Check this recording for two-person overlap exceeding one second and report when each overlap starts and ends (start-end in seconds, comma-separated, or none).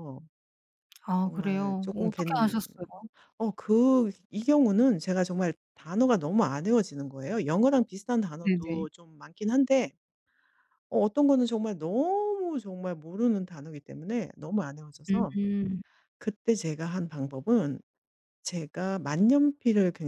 1.2-2.6